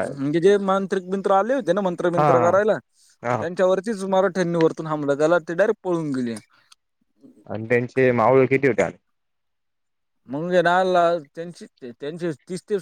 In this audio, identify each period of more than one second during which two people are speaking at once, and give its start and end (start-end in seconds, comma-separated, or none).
none